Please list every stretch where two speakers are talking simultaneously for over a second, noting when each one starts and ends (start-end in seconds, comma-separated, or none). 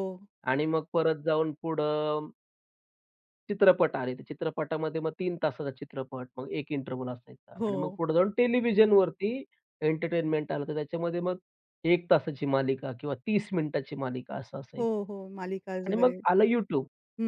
none